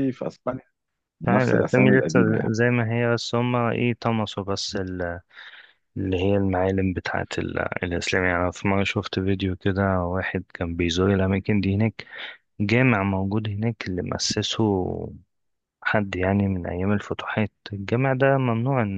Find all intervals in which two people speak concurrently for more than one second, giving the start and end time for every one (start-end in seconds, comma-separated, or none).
1.3-2.5